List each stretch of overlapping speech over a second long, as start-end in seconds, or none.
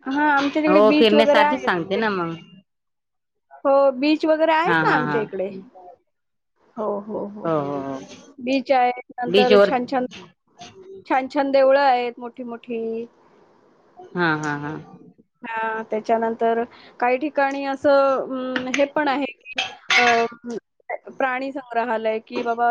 0.7-2.3